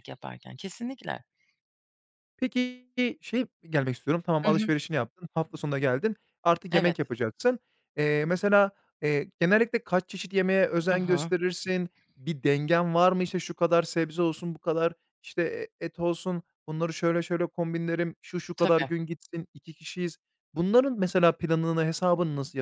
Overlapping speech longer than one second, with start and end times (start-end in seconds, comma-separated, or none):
none